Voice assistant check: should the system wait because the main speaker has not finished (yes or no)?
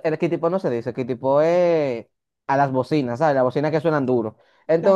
yes